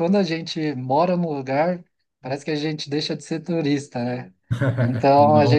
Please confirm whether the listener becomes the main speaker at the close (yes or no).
no